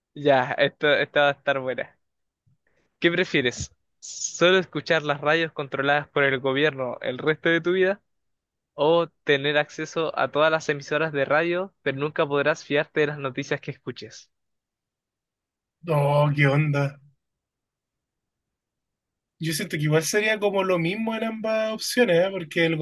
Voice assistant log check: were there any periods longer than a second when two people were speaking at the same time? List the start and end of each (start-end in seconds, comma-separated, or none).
none